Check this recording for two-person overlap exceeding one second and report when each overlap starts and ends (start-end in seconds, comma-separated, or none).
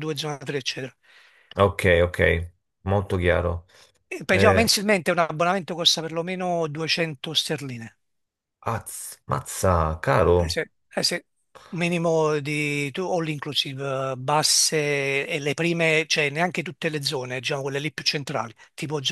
none